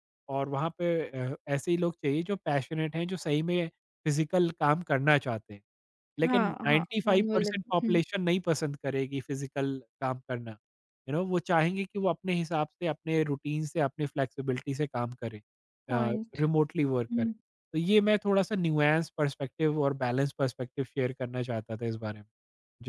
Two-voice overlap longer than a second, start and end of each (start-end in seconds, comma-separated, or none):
6.2-8.0